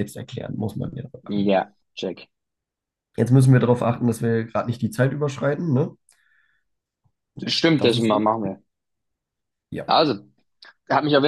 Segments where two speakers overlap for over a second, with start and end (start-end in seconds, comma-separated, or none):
none